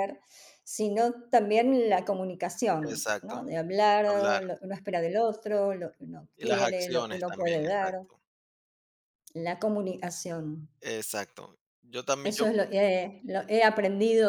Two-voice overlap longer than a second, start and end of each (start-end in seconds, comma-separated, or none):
6.4-7.9